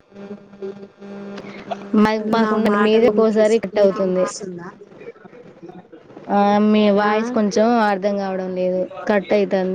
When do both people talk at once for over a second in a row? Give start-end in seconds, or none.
2.4-4.2